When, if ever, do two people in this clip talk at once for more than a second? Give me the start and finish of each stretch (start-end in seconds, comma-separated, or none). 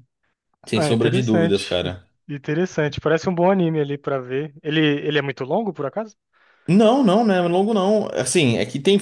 0.7-2.1